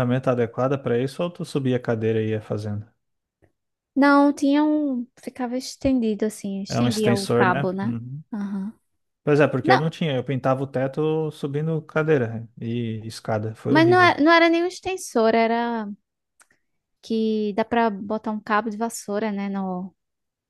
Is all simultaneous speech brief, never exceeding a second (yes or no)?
no